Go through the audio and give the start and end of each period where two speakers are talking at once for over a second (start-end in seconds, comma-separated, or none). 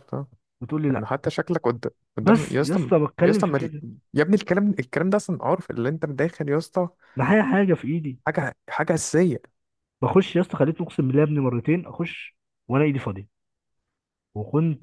2.2-3.7